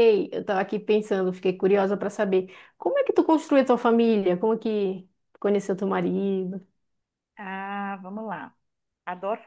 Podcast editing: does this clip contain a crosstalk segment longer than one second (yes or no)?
no